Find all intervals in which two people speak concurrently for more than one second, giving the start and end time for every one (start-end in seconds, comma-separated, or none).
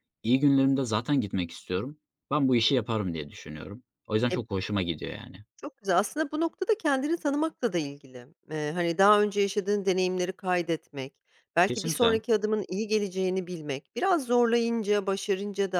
none